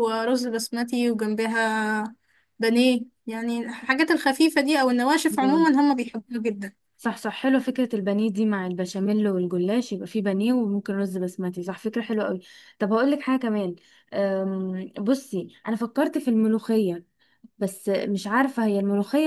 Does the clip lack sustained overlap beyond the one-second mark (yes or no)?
yes